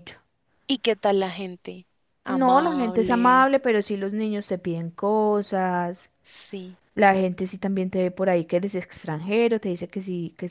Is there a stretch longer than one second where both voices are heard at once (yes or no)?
yes